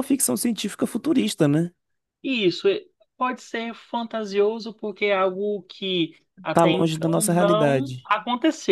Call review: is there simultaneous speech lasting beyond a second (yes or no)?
yes